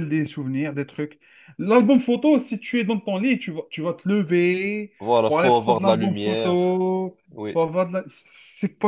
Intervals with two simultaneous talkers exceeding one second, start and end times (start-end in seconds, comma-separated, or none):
5.0-6.8